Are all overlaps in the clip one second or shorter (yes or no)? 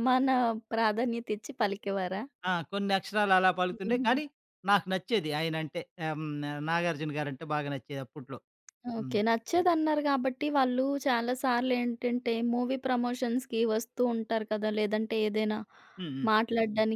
yes